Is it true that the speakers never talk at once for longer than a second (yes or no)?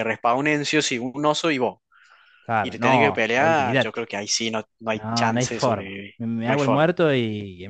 no